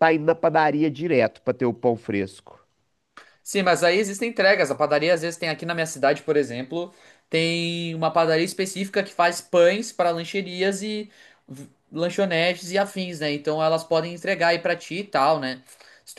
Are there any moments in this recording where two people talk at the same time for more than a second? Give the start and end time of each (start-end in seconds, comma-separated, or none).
none